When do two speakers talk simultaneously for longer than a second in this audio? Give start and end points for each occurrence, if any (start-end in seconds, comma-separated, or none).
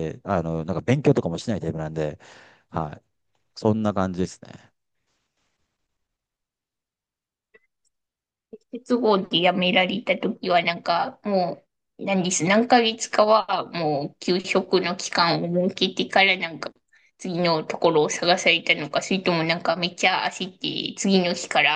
none